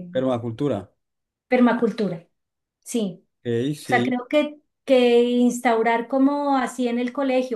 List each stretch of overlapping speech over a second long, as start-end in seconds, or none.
none